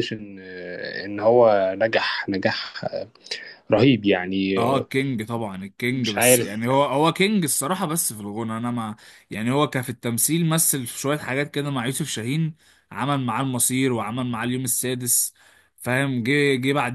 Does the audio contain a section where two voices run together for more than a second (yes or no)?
no